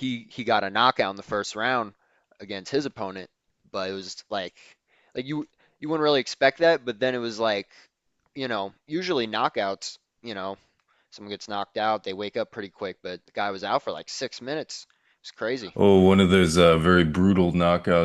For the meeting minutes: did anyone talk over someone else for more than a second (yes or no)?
no